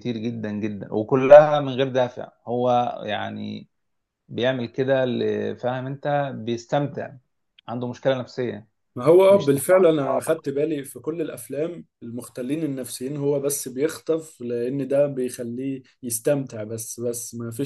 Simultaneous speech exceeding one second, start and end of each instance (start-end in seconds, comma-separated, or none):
none